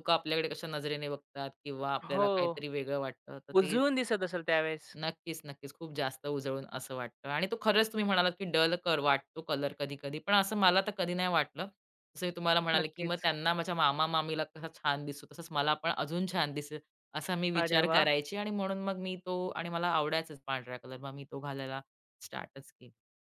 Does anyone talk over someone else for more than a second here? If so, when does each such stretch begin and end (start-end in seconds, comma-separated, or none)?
none